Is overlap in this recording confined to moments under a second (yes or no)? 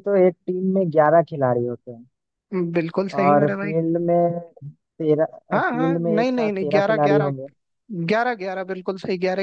no